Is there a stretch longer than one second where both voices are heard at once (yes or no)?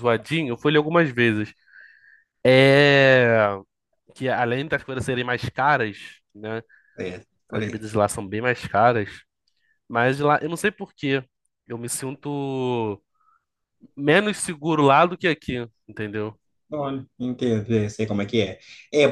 no